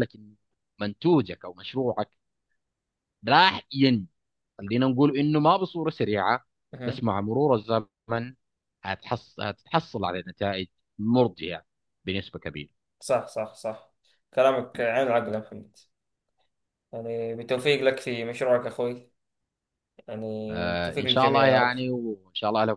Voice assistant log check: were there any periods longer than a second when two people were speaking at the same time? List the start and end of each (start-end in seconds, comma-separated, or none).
20.5-21.7